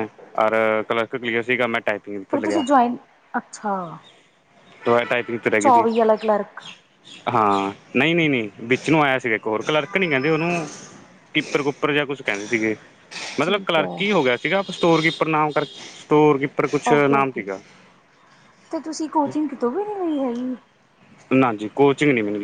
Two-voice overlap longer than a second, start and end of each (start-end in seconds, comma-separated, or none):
none